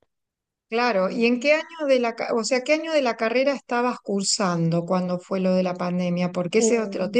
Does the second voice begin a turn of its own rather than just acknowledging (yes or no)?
no